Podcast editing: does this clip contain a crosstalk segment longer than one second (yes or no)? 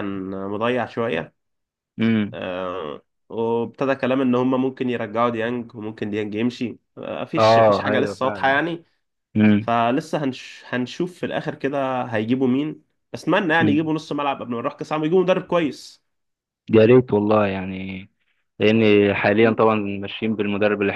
yes